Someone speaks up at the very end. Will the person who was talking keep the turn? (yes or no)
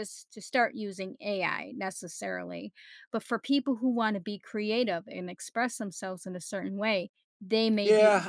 no